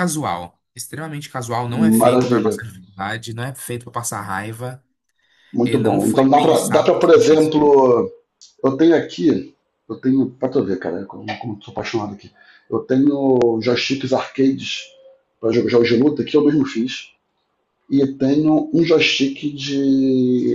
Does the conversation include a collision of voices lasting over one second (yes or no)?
yes